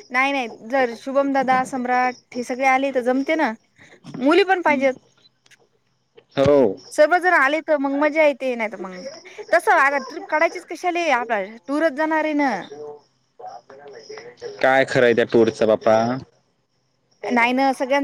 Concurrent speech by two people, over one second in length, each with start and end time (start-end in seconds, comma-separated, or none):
none